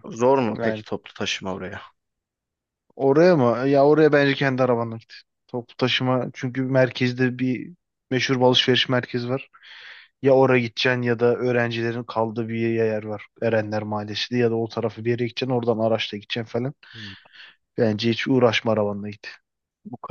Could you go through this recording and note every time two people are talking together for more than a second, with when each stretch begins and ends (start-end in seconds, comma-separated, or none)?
none